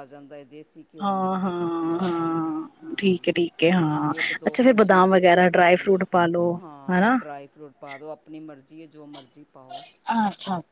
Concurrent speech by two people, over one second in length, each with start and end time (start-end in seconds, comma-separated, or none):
4.2-5.9